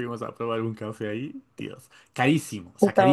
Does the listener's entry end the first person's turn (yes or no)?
no